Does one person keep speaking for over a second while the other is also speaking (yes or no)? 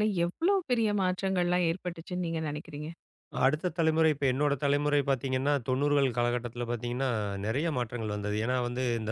no